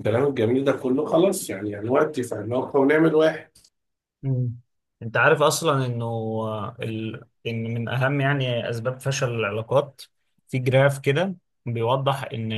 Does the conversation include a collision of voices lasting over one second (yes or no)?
no